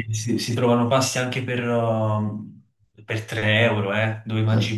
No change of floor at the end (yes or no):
no